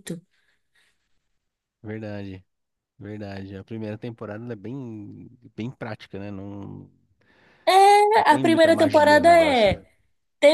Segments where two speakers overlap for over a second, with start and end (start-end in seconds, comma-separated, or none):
8.3-9.8